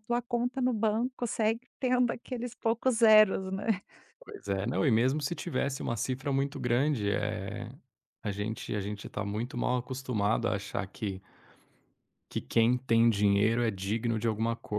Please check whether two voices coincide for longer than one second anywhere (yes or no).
no